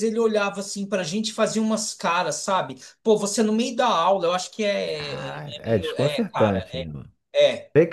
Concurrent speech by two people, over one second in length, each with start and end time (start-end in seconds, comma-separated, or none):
4.9-6.9